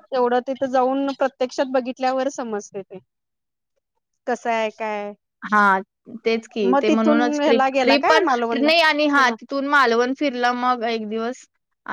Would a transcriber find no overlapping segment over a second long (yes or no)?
no